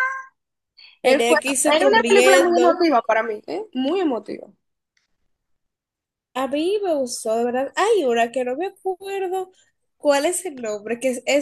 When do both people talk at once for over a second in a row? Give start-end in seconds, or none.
1.0-2.8